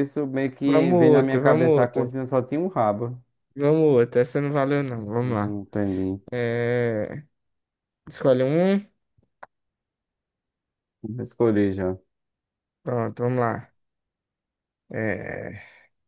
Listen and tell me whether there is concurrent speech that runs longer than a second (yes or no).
yes